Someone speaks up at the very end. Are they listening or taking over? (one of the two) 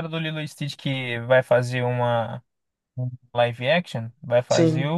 listening